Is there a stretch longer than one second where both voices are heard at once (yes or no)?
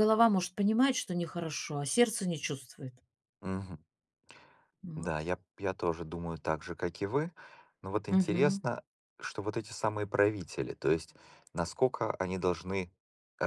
no